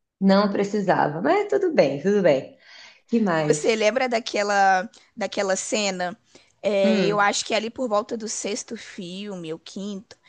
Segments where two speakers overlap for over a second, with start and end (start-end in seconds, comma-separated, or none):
none